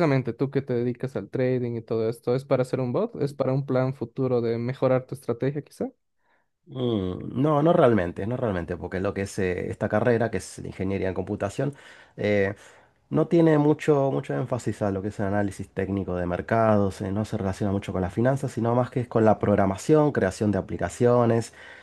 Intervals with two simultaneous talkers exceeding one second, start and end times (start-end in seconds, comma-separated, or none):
none